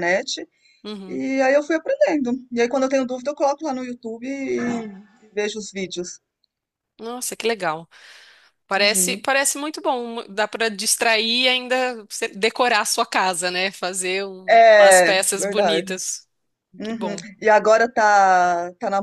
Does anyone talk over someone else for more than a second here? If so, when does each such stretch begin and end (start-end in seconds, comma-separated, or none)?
14.5-15.9